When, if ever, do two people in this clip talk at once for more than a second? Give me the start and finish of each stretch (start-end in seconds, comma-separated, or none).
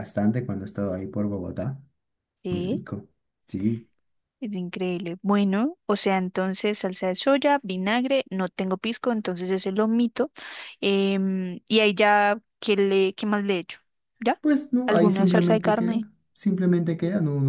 14.8-16.1